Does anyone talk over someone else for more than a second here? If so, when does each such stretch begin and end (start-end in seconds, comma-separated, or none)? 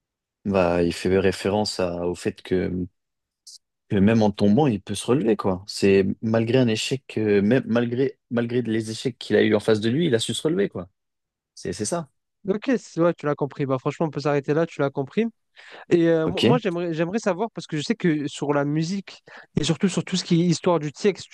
none